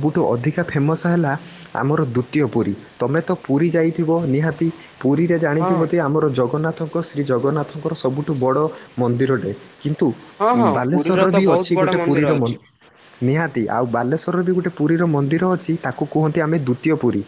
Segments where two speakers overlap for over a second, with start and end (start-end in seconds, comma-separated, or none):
10.8-12.5